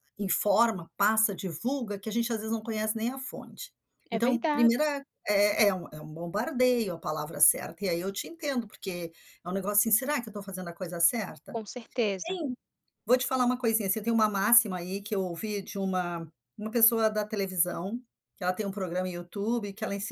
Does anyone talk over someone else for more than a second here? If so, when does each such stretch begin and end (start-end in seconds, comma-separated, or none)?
none